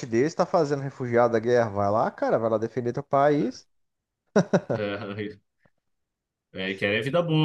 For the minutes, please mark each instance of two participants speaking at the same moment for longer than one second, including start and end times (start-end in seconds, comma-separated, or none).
none